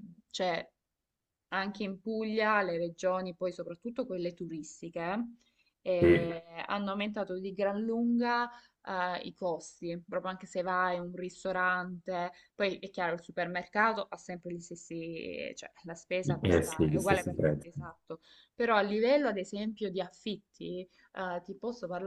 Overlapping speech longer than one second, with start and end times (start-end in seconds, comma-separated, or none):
16.4-17.7